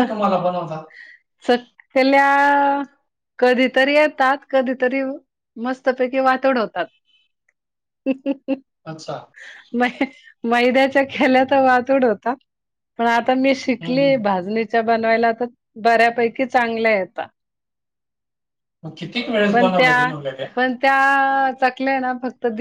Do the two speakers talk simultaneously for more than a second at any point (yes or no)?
no